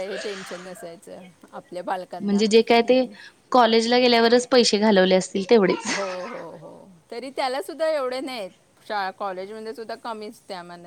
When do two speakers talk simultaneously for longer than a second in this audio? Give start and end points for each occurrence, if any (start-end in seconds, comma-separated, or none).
none